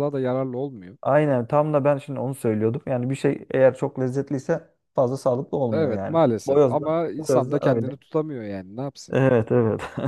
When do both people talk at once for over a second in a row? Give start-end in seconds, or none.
5.7-8.0